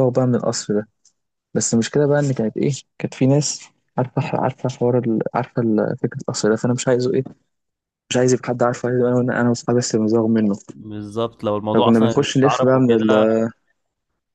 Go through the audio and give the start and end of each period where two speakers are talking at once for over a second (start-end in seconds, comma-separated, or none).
11.7-13.1